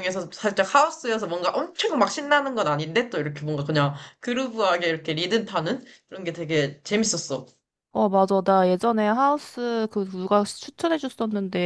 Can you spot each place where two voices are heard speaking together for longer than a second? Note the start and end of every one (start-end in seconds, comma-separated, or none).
none